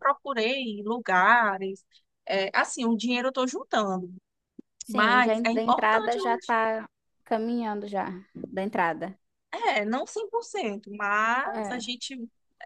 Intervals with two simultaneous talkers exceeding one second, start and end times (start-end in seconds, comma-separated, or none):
4.9-6.4